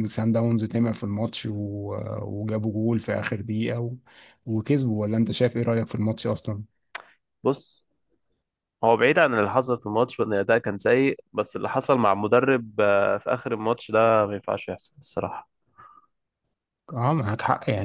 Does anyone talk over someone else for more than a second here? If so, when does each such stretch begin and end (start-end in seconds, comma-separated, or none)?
none